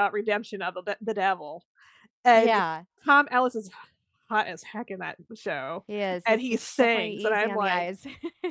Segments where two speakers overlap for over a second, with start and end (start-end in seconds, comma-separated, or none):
6.3-7.9